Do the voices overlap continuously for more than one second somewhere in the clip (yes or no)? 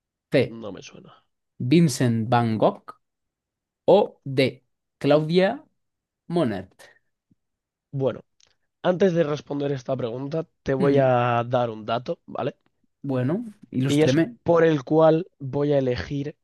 no